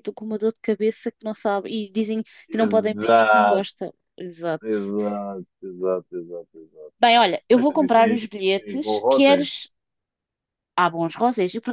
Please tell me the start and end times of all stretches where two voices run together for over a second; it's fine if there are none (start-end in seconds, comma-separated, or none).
2.5-3.7, 7.5-9.5